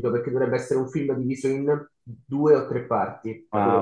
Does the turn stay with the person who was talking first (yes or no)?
no